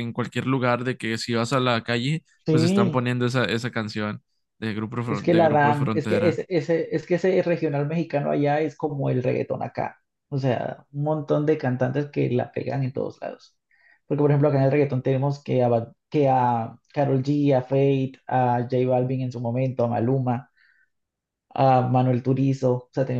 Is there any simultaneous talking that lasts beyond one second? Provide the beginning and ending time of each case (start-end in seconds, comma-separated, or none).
5.0-6.4